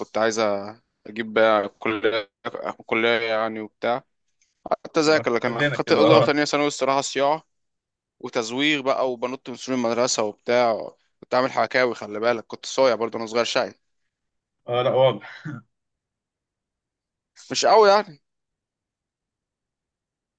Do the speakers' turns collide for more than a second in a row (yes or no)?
yes